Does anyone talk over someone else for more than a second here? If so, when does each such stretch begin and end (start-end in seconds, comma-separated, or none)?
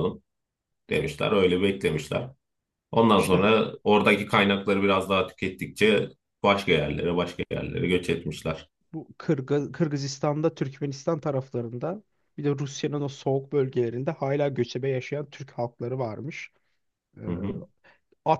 none